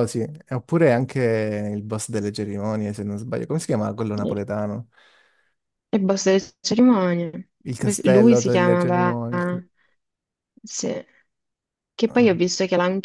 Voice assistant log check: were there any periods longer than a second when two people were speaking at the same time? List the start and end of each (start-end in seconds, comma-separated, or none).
7.7-9.2